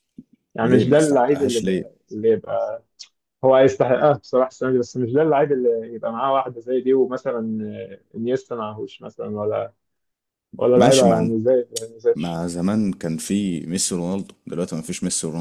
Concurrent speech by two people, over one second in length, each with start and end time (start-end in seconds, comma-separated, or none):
0.6-1.9